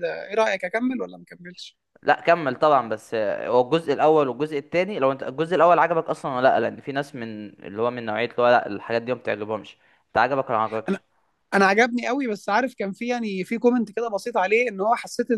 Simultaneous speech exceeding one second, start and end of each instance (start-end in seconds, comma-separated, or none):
none